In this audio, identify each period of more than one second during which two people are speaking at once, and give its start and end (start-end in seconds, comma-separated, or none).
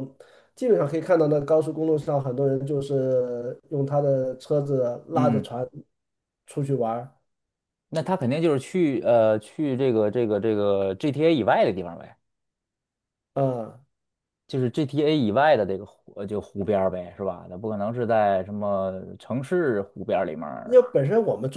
none